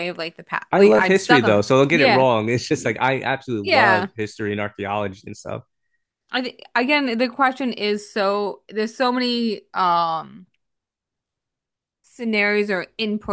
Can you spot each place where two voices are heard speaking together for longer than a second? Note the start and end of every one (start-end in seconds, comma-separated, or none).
0.7-2.2